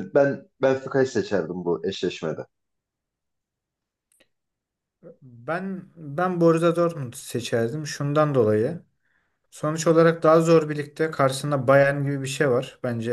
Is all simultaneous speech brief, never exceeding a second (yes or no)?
yes